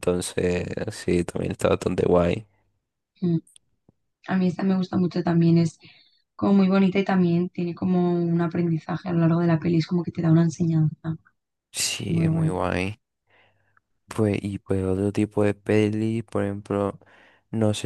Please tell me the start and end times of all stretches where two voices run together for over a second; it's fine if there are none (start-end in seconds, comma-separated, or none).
none